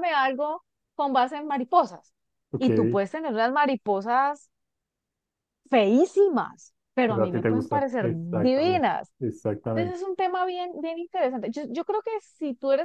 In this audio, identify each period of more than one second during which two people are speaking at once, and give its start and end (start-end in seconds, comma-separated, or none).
7.0-9.1